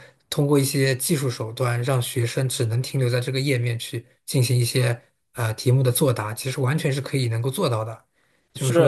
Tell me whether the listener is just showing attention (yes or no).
no